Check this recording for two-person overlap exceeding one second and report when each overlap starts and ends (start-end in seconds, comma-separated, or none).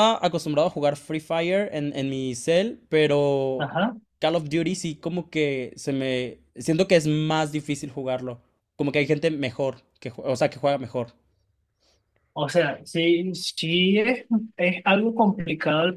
none